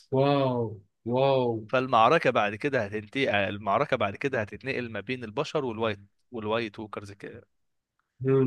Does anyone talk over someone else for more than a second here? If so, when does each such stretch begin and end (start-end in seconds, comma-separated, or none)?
none